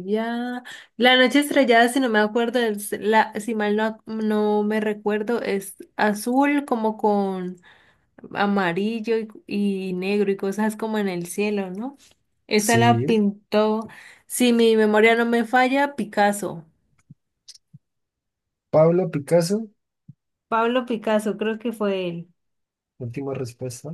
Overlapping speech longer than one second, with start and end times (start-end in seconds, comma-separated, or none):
none